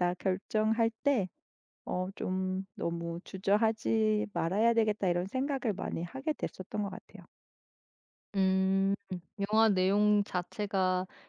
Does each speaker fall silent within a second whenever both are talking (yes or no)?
yes